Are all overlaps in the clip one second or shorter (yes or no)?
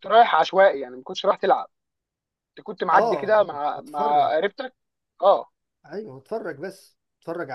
no